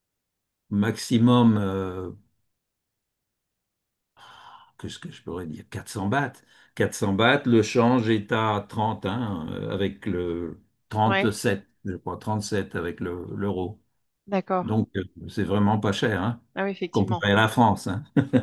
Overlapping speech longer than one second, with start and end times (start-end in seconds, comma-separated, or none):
none